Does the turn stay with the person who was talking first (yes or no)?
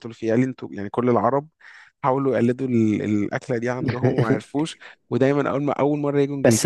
no